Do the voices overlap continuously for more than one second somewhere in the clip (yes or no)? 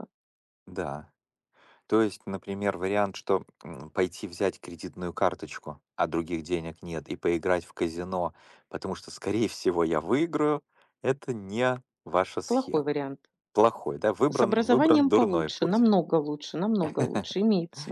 yes